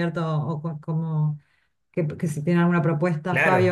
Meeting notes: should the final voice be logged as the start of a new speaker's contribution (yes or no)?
yes